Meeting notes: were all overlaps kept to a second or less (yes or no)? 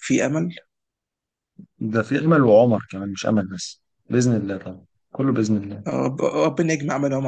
yes